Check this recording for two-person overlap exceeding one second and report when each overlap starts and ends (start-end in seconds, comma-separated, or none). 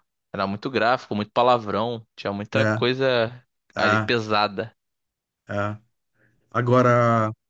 none